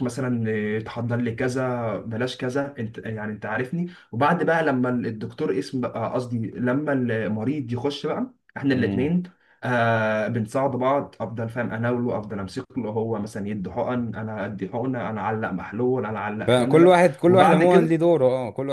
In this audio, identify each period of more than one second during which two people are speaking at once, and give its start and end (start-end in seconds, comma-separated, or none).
16.4-18.0